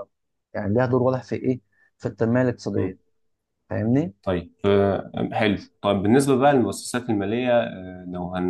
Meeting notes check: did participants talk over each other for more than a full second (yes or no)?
no